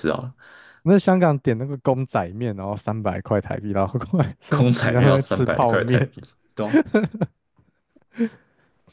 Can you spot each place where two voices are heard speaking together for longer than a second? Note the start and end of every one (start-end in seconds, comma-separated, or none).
4.5-6.1